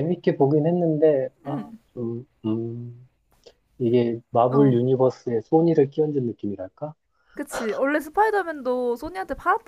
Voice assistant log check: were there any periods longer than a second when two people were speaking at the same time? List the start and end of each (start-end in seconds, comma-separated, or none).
none